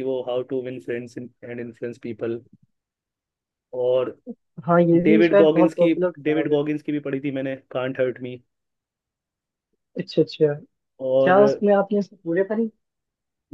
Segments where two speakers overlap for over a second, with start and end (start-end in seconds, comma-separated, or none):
5.0-6.6